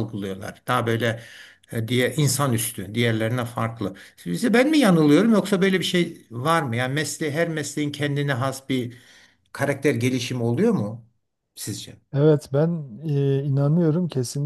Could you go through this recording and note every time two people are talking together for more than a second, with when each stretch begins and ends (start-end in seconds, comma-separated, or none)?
none